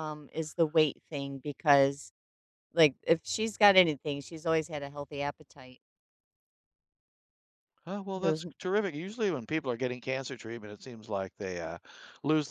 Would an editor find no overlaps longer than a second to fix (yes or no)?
yes